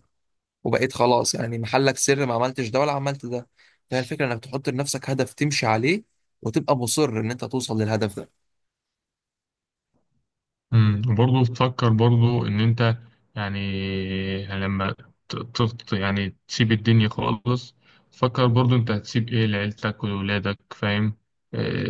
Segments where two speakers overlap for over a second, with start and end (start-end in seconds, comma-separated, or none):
none